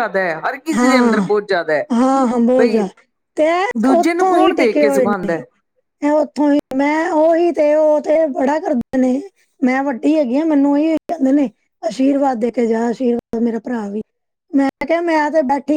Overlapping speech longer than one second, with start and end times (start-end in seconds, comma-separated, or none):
4.0-5.4